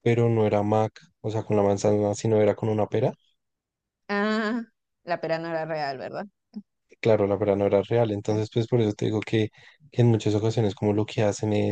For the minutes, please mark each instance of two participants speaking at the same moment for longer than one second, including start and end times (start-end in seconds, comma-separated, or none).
none